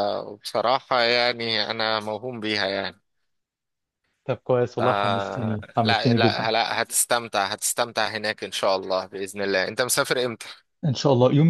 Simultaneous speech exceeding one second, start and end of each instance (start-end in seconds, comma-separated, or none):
4.8-6.5